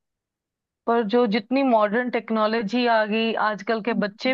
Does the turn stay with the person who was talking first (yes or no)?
yes